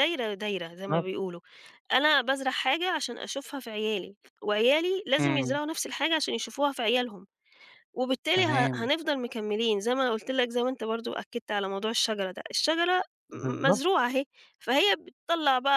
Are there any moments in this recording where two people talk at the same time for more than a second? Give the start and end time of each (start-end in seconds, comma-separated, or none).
none